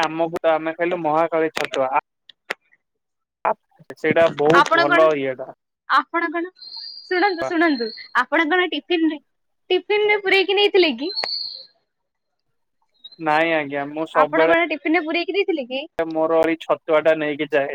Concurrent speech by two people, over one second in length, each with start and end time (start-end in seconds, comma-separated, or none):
none